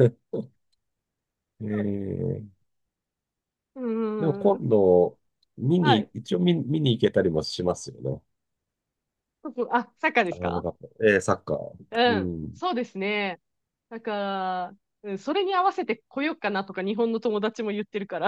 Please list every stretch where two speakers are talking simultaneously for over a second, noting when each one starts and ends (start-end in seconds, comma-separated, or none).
none